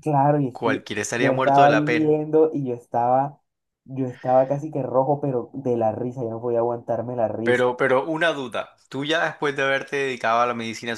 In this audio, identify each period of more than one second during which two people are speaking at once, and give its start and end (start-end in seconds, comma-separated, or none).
0.5-2.2